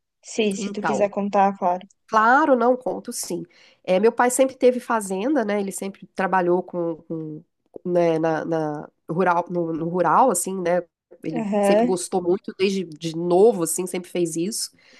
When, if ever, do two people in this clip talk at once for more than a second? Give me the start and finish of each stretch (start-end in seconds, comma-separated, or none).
none